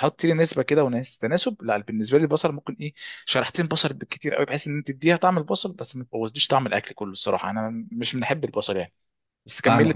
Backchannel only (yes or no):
no